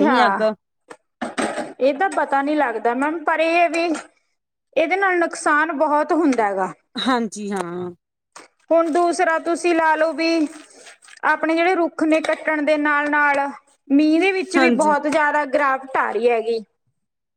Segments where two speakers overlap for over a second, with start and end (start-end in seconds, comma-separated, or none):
none